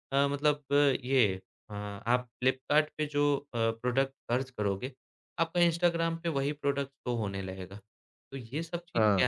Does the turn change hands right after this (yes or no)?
no